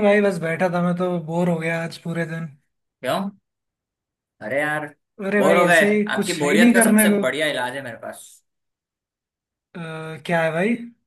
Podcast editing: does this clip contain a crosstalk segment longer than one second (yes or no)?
yes